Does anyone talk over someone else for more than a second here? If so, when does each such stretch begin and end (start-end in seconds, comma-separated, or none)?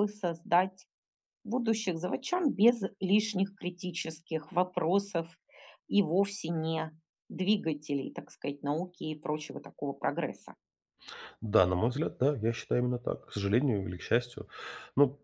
none